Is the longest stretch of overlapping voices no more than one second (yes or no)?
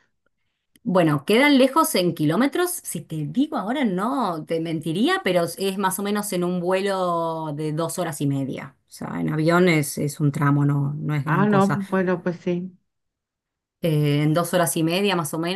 yes